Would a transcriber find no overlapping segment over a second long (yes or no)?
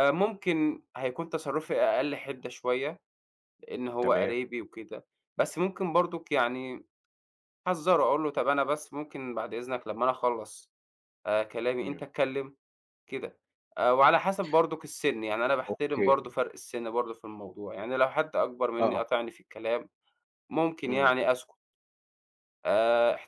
yes